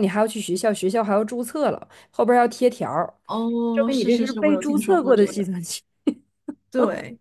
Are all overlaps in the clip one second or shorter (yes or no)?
no